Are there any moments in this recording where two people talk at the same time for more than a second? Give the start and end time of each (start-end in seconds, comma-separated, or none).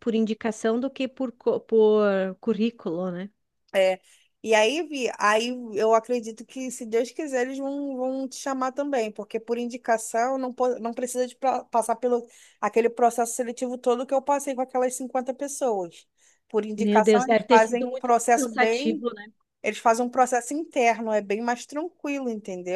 16.8-19.1